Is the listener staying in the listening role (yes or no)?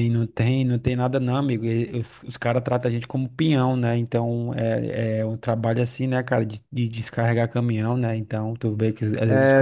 no